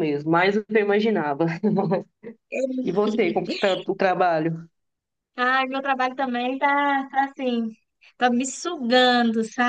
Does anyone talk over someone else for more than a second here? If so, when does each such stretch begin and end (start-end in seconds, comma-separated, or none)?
none